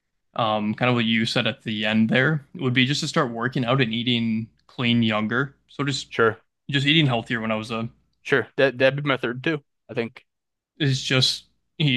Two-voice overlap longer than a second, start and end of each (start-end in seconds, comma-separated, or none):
none